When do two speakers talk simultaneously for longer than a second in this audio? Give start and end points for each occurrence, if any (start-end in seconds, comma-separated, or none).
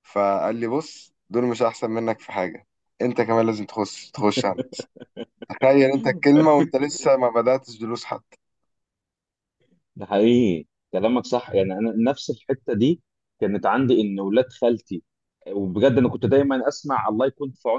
none